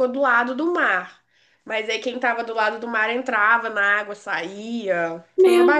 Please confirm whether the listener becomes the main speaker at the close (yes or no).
yes